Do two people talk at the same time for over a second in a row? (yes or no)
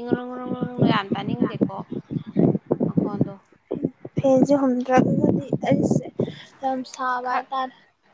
no